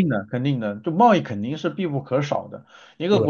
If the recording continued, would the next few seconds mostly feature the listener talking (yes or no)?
no